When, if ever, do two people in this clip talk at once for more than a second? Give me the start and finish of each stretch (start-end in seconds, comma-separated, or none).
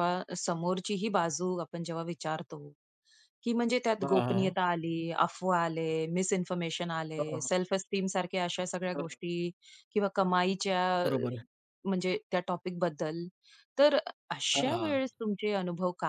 none